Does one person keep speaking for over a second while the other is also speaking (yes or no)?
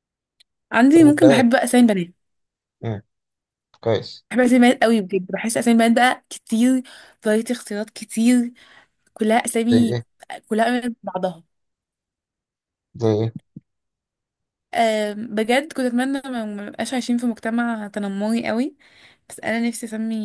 no